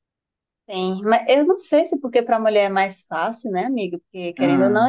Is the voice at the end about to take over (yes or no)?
no